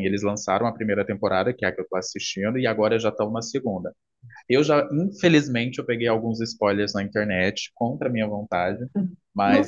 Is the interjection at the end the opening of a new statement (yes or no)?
no